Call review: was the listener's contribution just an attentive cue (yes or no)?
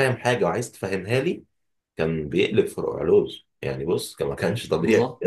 no